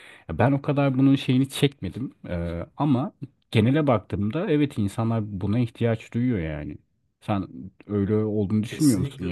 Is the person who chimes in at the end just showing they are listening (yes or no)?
no